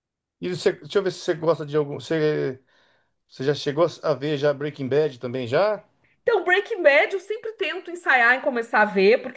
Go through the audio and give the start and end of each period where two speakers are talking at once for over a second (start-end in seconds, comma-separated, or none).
none